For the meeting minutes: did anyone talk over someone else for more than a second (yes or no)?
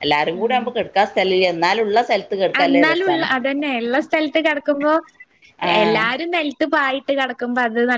no